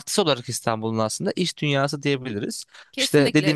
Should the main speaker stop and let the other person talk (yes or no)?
yes